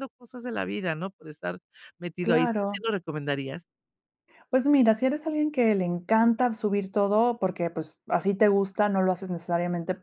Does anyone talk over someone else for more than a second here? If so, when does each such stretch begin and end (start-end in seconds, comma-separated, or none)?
none